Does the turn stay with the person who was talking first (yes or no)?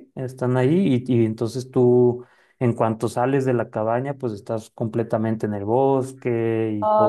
no